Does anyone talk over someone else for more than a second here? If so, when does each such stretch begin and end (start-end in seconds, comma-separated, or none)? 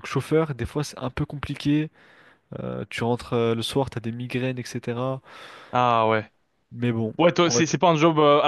none